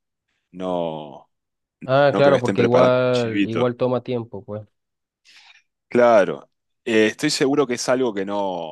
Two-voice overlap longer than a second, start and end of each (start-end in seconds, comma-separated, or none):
2.1-3.7